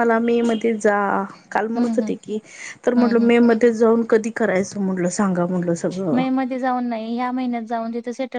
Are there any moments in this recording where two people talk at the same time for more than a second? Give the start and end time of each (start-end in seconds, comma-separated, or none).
none